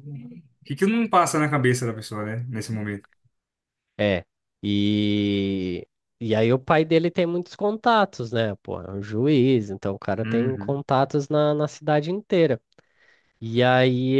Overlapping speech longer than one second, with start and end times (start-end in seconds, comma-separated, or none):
none